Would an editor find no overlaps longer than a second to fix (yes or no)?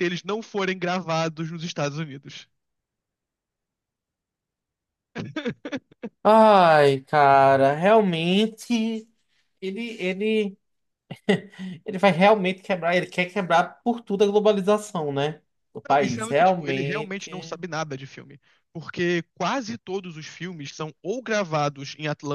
no